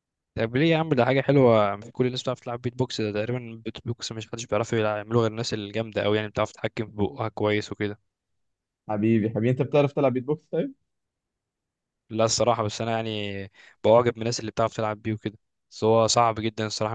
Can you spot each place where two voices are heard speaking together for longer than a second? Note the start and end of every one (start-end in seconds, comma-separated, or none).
none